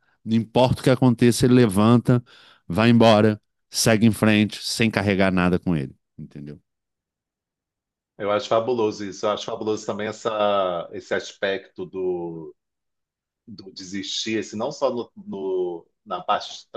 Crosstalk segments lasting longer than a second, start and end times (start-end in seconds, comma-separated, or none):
none